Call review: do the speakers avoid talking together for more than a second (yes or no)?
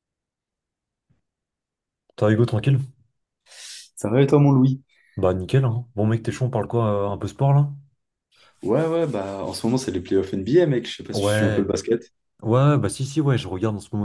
yes